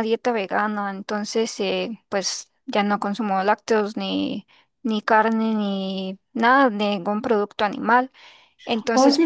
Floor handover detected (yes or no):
yes